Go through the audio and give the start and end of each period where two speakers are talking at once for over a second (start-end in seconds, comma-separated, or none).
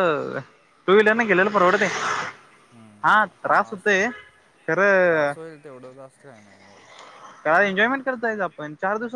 none